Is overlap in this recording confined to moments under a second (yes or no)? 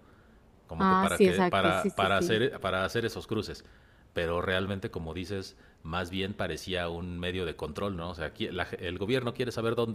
no